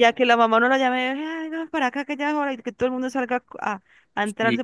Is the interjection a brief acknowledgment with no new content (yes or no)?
no